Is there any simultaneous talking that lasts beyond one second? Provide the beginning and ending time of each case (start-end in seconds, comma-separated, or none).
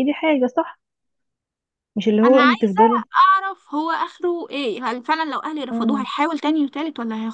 none